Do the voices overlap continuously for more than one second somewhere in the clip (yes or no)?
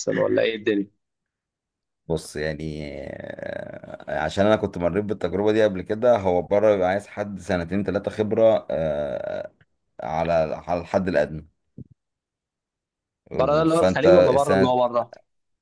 yes